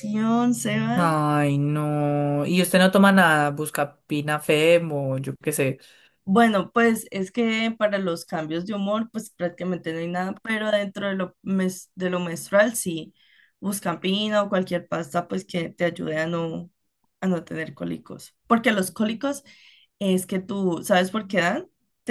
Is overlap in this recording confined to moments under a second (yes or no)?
yes